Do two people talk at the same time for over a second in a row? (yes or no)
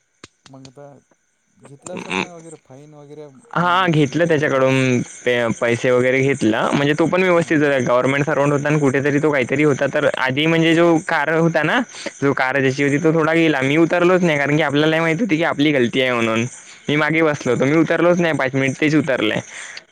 yes